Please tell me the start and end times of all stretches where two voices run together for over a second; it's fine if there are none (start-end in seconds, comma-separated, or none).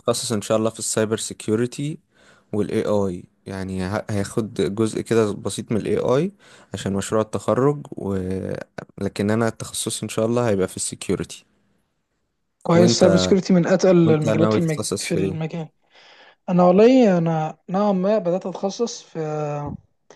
14.0-15.4